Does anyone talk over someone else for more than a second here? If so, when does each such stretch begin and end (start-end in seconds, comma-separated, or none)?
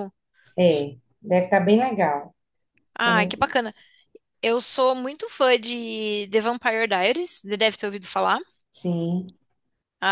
none